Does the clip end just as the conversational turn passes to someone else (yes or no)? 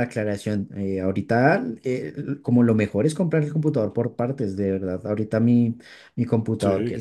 no